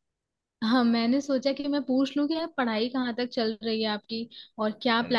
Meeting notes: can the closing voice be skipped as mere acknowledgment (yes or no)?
yes